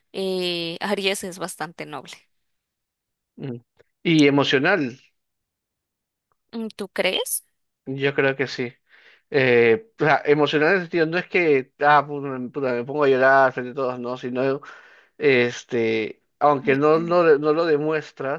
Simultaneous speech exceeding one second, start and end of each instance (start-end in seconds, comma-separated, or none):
none